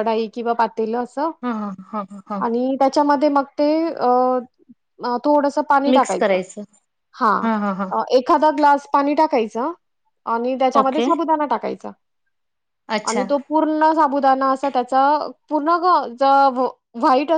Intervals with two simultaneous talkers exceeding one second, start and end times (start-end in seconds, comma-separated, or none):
none